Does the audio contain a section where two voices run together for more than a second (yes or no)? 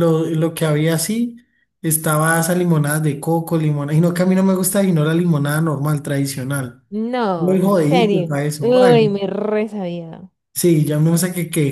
yes